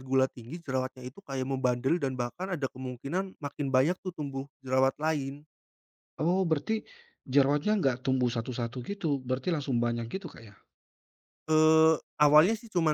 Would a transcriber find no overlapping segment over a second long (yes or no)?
yes